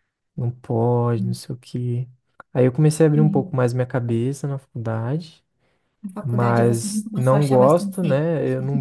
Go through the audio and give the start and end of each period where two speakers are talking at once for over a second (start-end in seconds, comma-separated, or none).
6.2-8.2